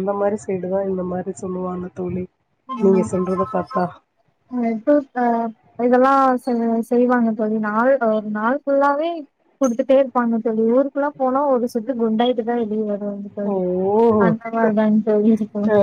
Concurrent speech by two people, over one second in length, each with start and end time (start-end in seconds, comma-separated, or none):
none